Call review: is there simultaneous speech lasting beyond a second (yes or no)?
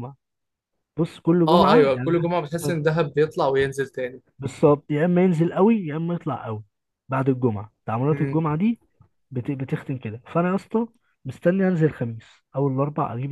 yes